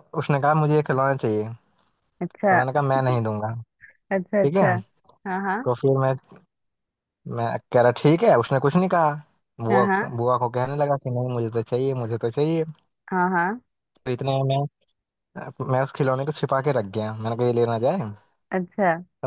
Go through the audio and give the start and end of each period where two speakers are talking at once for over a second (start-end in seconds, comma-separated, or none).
none